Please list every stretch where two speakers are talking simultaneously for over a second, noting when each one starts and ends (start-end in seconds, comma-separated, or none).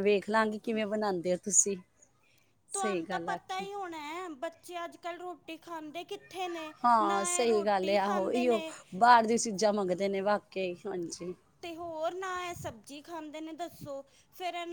6.8-8.6